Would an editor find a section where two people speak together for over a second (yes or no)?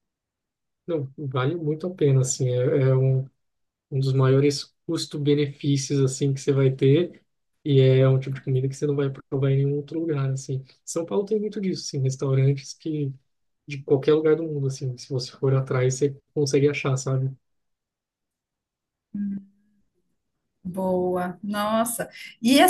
no